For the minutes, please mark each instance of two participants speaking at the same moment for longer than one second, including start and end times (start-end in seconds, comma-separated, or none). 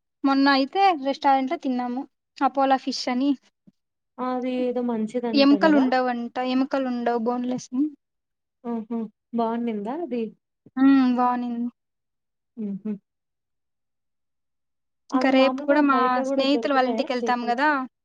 15.2-17.6